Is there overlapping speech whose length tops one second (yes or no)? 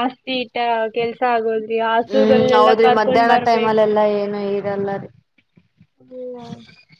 yes